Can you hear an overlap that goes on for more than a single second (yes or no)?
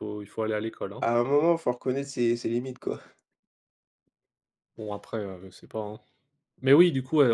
no